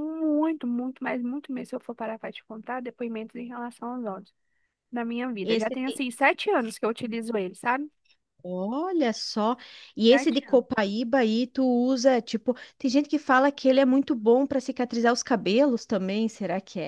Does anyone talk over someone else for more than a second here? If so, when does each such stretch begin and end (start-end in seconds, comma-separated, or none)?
none